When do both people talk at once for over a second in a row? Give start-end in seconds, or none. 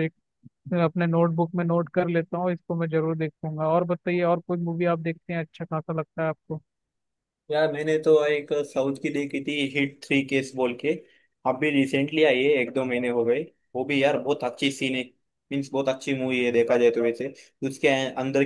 none